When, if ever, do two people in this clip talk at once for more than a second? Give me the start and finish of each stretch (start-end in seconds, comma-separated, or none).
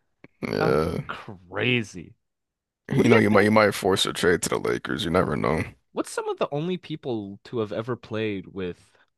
none